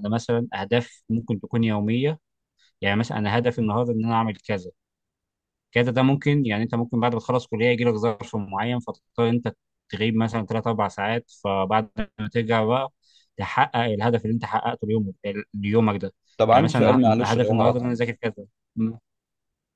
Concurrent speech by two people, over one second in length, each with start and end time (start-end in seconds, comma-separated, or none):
16.5-17.9